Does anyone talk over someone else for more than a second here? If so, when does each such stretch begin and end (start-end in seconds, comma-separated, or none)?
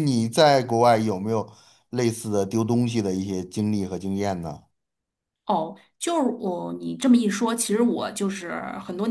none